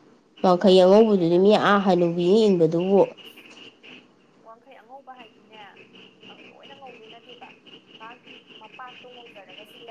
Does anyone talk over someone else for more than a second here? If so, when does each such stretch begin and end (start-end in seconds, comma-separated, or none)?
0.6-2.3